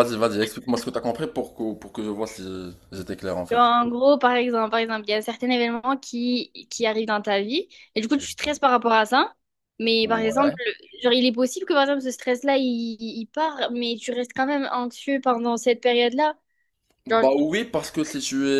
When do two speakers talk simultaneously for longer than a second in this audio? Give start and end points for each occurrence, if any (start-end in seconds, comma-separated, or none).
none